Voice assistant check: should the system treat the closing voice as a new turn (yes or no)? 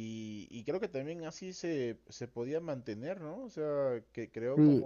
yes